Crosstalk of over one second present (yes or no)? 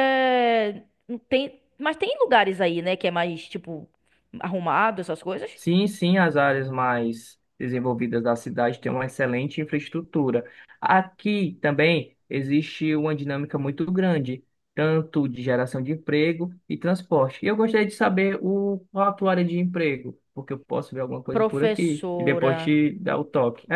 yes